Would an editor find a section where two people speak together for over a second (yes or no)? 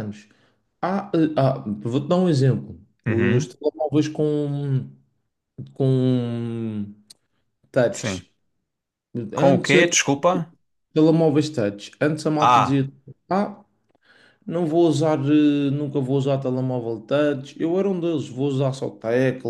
no